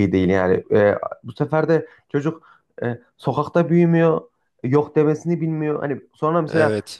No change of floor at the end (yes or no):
yes